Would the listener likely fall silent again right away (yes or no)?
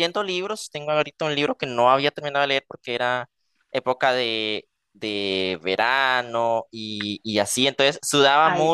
yes